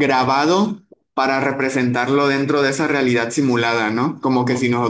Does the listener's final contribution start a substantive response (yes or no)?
no